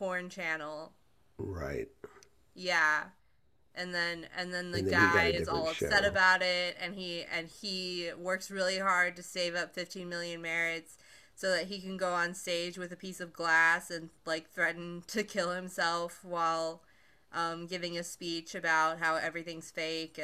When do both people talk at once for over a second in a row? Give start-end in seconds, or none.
4.7-6.2